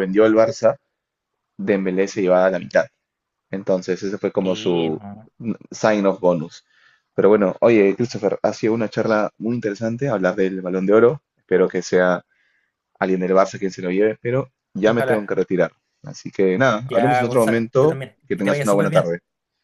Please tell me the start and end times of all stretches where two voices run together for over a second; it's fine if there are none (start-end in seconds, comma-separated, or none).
16.9-19.1